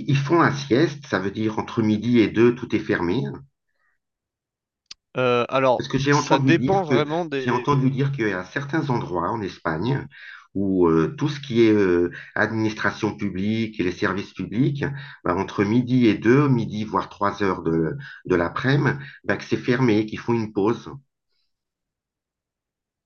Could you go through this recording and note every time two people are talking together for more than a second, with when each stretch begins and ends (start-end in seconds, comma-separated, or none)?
5.8-7.9